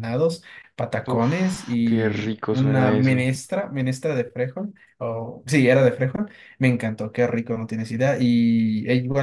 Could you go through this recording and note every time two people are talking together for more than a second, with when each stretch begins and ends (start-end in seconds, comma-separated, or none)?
1.1-3.3